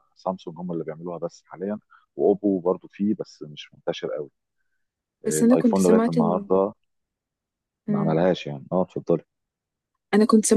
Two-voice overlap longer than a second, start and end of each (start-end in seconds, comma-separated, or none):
5.3-6.5